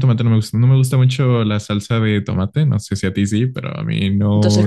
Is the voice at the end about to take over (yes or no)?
yes